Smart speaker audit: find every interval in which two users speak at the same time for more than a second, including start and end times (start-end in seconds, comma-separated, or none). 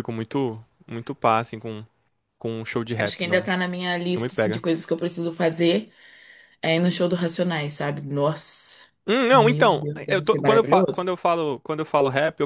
9.3-11.1